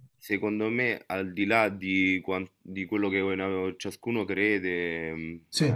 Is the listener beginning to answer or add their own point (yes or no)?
no